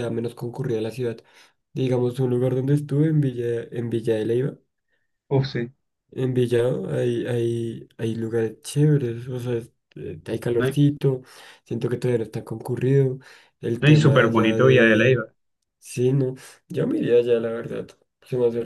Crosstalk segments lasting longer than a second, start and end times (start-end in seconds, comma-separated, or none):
13.8-15.2